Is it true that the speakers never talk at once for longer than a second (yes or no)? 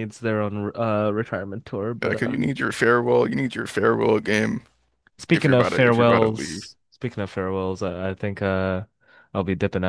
no